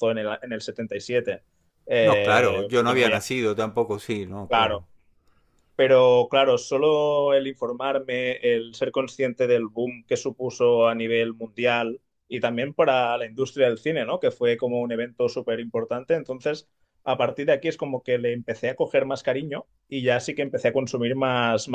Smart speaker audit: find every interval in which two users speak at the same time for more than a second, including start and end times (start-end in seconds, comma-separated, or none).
2.0-3.2